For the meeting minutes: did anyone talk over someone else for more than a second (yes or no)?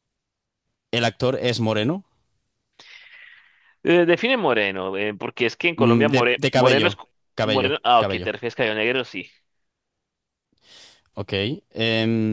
yes